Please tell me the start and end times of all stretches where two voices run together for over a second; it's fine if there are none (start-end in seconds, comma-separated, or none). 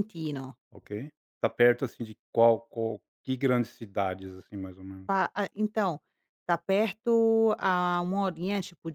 none